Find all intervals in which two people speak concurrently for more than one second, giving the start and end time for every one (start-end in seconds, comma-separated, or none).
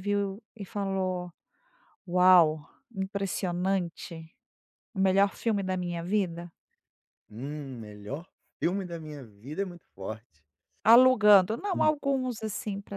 none